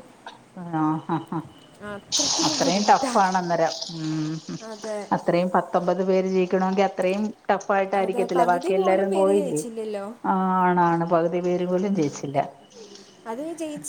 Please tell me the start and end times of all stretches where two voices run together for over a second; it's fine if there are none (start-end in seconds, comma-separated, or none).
8.0-9.6